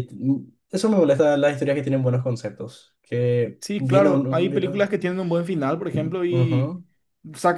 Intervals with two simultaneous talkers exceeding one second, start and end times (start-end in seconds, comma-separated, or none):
3.6-4.9